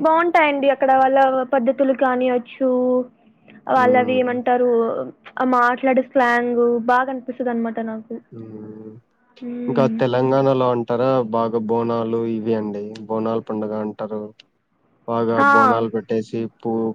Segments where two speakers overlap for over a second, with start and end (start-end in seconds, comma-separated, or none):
none